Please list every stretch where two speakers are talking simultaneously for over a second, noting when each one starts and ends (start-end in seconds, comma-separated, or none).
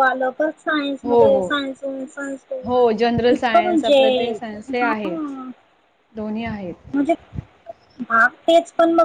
2.6-4.0